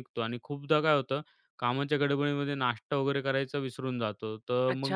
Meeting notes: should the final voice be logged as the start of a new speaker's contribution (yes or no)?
yes